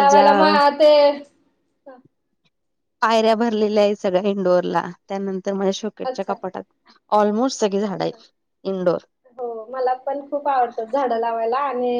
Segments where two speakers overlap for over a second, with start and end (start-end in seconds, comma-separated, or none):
none